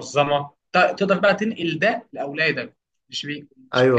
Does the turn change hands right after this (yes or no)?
yes